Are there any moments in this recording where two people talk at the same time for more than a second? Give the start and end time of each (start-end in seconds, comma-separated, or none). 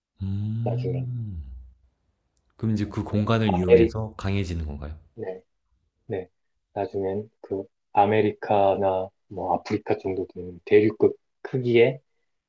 2.7-4.0